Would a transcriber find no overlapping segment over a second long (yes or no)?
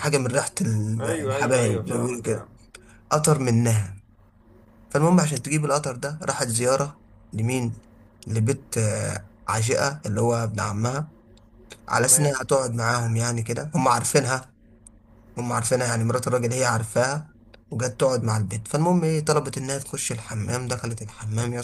no